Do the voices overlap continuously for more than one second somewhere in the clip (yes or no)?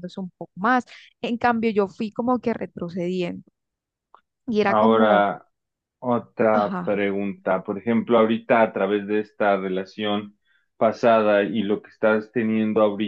no